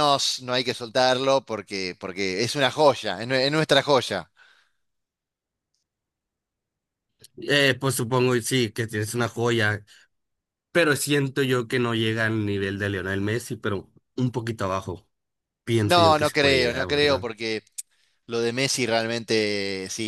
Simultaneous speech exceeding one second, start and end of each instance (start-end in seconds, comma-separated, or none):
15.8-17.3